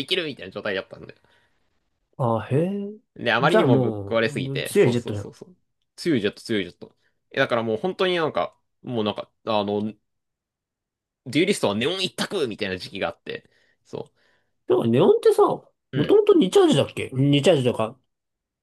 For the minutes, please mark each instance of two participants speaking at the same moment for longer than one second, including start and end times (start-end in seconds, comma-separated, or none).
3.4-5.3